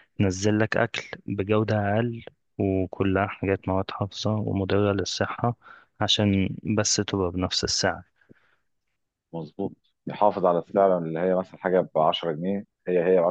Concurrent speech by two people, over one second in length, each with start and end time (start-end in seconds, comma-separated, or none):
none